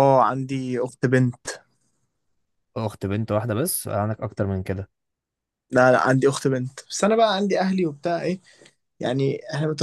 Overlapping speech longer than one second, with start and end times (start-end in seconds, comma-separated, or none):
none